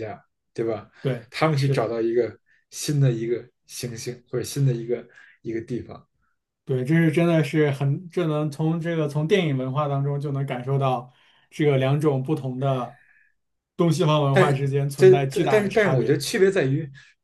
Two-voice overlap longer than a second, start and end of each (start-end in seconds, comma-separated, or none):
14.9-16.2